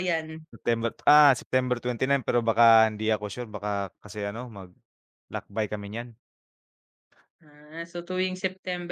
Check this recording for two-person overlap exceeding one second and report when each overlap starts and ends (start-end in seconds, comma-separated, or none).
none